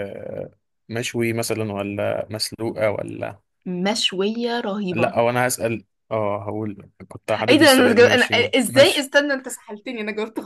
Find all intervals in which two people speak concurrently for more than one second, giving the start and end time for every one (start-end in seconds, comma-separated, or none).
7.5-9.1